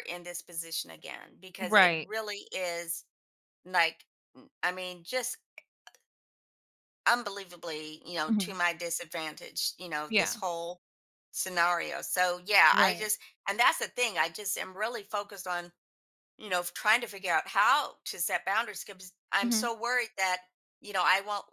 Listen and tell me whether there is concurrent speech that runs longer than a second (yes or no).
no